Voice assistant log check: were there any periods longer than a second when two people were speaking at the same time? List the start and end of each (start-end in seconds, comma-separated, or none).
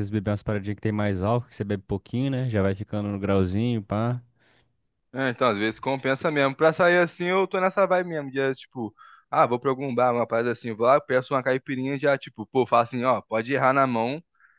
none